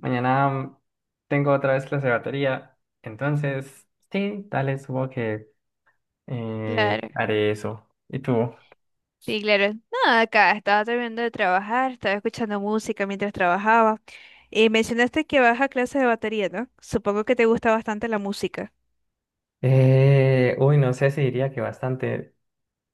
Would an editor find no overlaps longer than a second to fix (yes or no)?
yes